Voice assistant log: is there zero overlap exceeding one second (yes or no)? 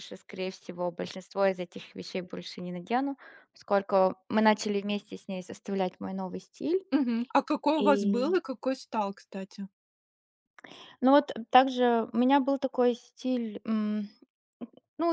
yes